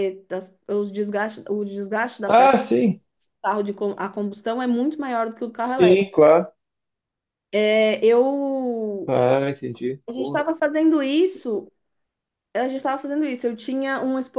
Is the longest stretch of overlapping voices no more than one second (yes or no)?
yes